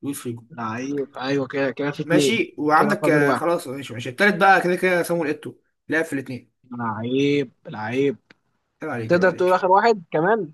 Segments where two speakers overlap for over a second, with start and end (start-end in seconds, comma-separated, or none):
2.0-3.4